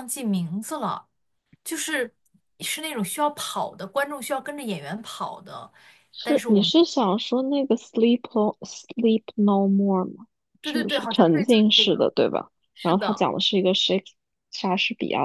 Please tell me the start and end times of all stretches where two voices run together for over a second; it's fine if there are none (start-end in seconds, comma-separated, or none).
10.6-12.1